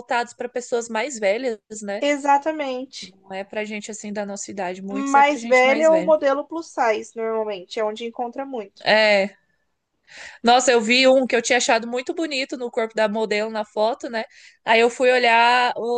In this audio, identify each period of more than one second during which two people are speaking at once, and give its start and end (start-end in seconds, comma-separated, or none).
4.9-6.1